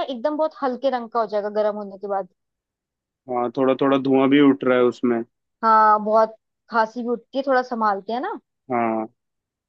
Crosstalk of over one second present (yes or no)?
no